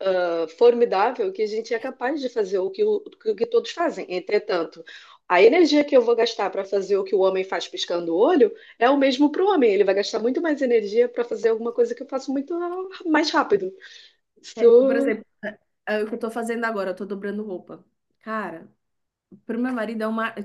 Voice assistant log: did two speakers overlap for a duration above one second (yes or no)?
no